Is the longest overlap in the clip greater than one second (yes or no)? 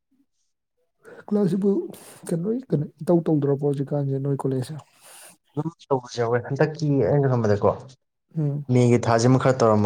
no